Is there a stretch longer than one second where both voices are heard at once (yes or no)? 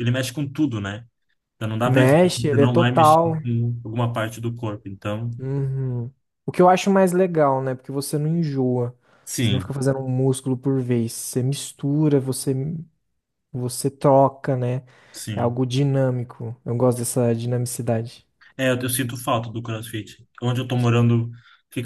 yes